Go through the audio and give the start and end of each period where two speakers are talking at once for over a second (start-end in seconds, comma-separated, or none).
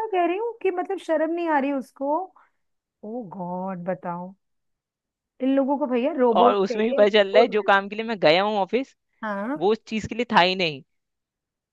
6.4-7.7